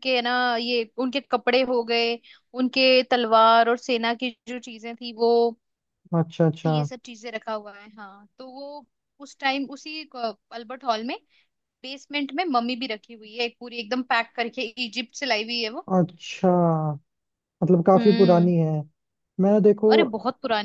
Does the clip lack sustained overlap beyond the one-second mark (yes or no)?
yes